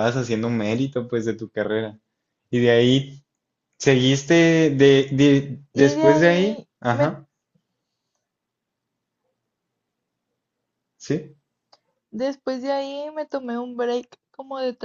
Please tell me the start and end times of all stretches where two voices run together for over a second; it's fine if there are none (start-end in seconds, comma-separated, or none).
5.7-7.2